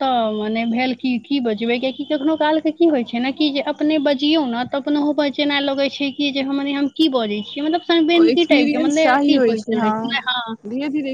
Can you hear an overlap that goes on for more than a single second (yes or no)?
yes